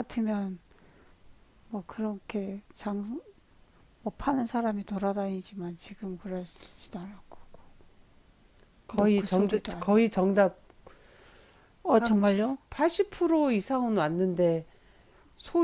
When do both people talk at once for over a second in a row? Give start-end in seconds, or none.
8.9-10.2